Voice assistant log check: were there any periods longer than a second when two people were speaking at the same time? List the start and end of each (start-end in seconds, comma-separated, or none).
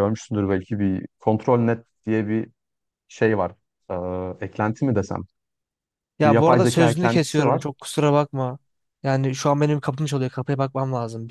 6.2-7.6